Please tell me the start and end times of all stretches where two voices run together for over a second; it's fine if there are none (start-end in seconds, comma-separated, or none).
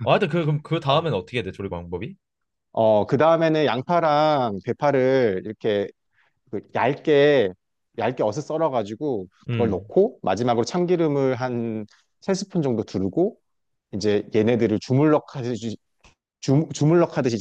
none